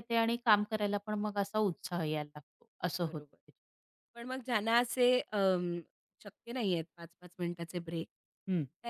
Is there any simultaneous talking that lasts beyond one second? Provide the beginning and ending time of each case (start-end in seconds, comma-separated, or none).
none